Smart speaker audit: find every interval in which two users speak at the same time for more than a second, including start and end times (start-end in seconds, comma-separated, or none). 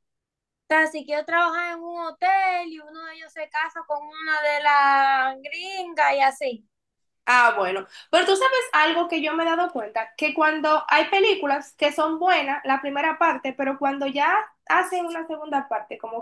none